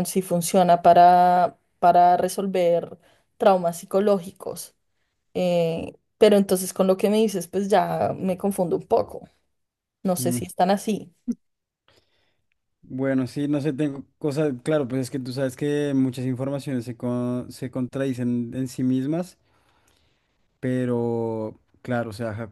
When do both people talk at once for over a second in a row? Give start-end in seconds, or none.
none